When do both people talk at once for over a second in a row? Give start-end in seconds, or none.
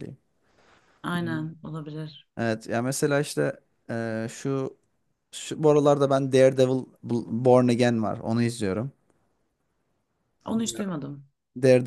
none